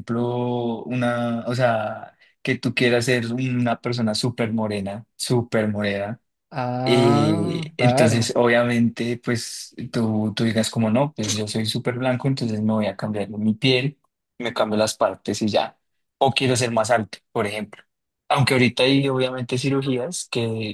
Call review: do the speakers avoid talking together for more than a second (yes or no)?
no